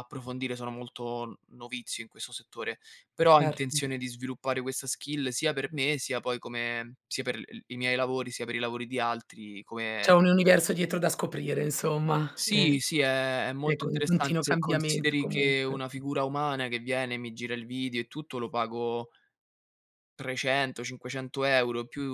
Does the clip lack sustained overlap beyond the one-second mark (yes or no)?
no